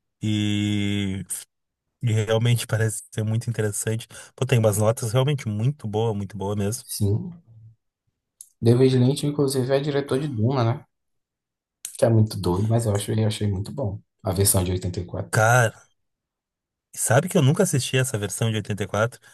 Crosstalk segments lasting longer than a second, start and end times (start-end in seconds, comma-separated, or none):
none